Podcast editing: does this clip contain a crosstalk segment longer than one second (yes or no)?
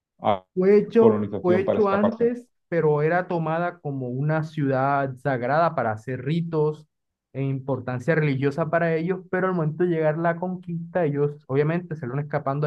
yes